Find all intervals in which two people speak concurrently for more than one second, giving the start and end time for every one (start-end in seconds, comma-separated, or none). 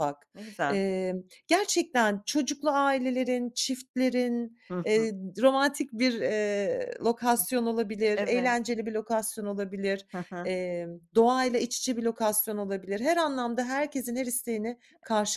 none